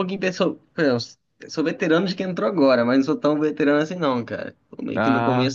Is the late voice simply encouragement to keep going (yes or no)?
yes